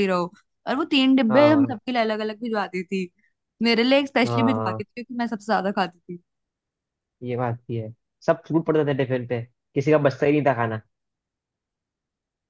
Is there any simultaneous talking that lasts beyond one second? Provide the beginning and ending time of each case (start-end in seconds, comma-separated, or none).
none